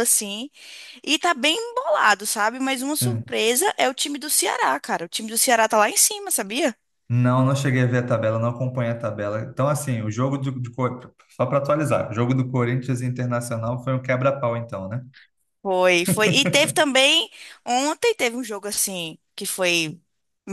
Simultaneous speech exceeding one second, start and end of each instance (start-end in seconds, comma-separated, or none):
none